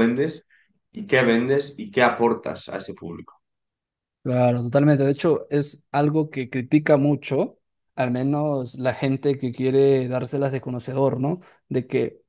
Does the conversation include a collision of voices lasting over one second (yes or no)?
no